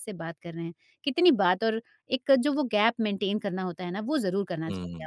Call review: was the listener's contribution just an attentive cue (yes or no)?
no